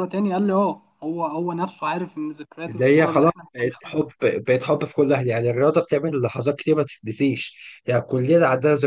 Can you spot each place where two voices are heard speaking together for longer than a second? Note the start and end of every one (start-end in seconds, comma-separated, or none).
2.7-4.0